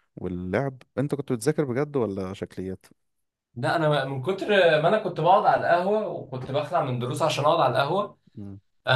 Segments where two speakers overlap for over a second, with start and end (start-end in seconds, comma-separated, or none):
none